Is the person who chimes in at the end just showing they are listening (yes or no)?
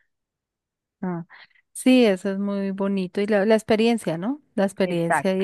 yes